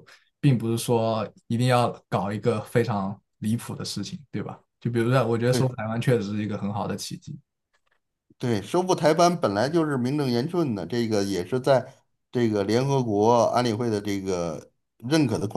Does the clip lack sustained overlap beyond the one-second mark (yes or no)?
yes